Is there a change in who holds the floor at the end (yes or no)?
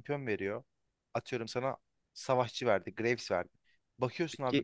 no